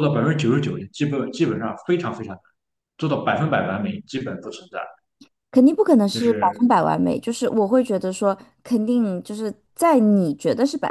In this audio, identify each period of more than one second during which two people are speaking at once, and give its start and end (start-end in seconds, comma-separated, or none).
none